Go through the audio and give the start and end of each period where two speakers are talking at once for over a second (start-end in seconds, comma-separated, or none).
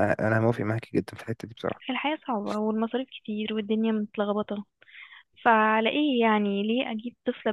none